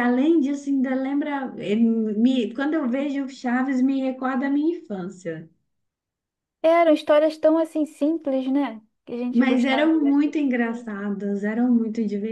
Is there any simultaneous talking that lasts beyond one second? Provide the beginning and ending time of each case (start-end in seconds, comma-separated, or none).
9.3-10.9